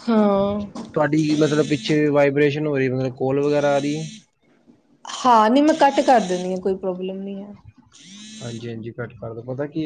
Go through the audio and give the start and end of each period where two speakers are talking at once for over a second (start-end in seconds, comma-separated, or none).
none